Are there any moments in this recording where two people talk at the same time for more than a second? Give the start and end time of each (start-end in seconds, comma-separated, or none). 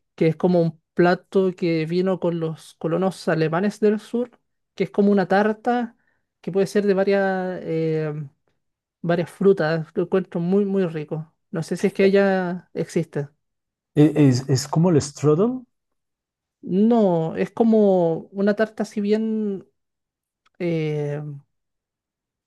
none